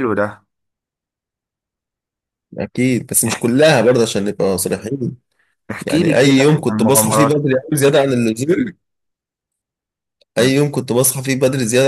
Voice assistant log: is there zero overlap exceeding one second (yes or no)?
no